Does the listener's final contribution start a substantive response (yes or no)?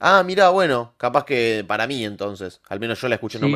yes